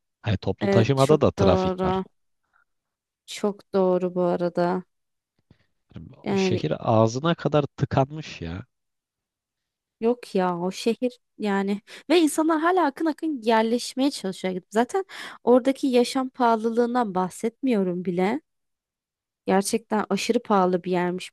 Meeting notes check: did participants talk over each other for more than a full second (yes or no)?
yes